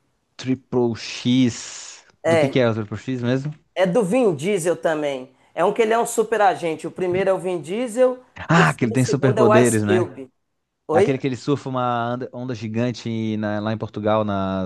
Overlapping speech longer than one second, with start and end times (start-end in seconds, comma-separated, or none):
8.3-10.2